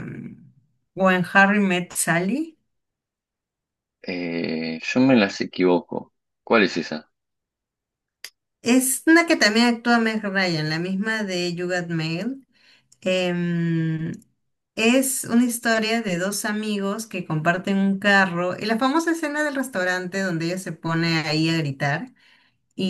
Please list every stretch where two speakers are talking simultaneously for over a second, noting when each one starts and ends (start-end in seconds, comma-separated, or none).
none